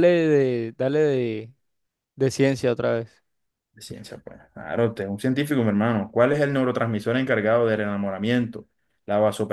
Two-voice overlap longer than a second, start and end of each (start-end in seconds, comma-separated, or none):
none